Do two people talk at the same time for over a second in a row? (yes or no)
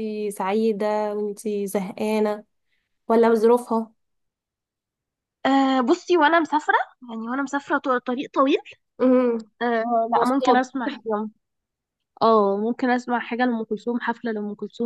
no